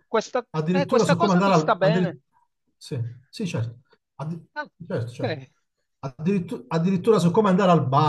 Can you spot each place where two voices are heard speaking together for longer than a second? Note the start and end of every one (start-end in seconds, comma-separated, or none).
0.5-2.2